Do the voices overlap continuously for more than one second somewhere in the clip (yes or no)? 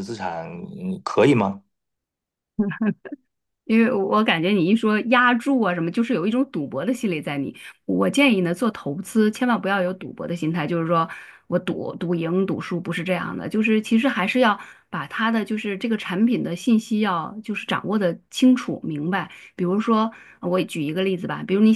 no